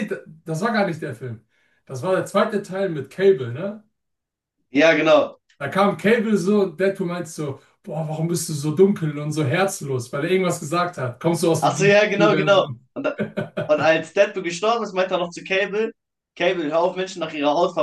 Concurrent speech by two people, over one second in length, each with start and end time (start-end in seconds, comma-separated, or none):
11.6-12.8